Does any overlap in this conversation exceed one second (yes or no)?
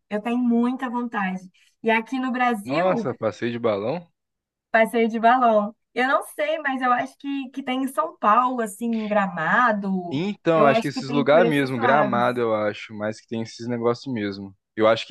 yes